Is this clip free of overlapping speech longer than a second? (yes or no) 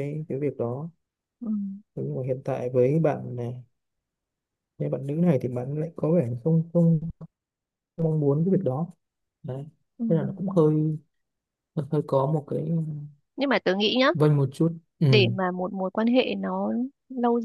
yes